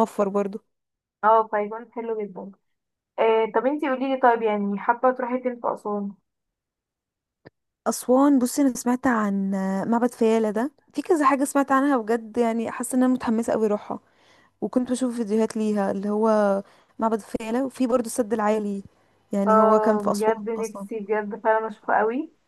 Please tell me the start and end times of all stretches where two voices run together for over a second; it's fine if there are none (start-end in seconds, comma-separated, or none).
19.5-20.9